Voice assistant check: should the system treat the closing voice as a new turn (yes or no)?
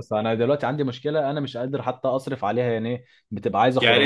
no